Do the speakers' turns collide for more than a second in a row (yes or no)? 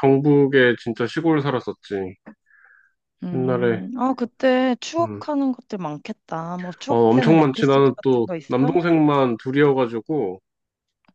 yes